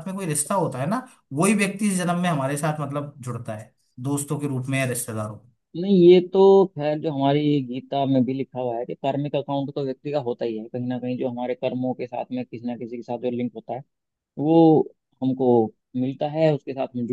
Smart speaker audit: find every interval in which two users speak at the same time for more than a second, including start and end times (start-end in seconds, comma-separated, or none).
none